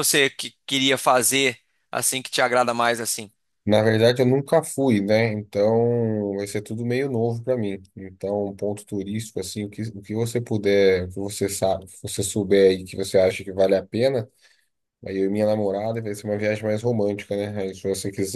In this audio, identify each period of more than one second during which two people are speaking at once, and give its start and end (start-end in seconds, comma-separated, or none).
none